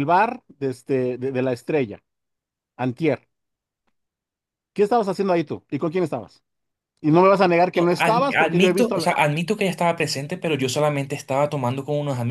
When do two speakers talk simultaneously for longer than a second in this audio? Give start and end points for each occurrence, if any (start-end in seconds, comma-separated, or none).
7.8-9.2